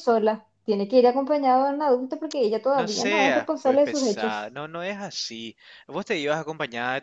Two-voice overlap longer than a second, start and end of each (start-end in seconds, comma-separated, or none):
2.8-4.5